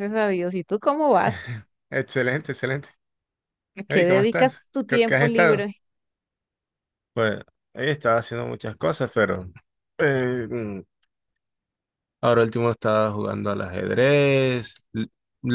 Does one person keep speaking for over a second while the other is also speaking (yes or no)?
yes